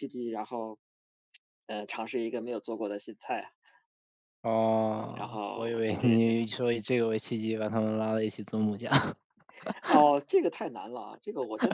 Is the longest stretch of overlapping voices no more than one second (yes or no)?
no